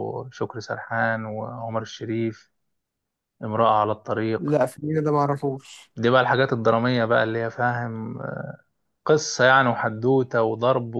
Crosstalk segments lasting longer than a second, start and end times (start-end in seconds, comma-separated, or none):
none